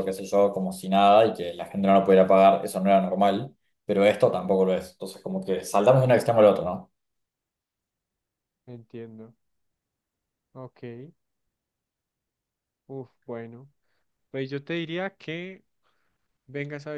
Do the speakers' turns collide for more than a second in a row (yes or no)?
no